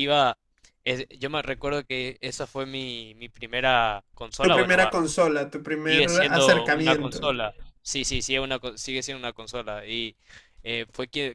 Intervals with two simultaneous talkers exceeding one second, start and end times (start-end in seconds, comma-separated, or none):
5.9-7.3